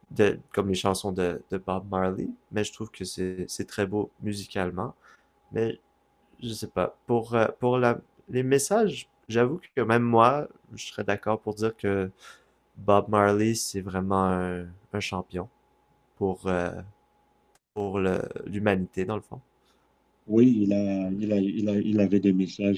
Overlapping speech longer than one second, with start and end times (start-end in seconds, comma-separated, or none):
none